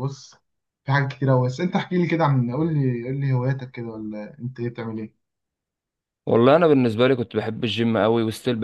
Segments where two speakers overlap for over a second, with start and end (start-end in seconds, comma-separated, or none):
none